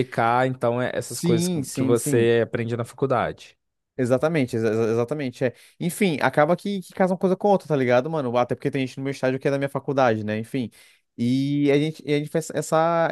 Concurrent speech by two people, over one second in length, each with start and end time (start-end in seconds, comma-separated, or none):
1.0-2.3